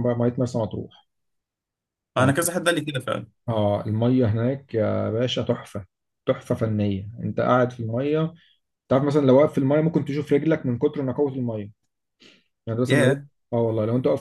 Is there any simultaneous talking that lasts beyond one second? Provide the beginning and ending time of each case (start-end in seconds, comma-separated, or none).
none